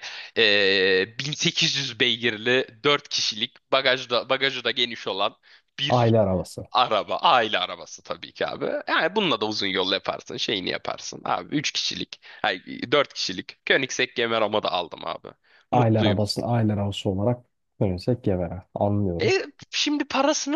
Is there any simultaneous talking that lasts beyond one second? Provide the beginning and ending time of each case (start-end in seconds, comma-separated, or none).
none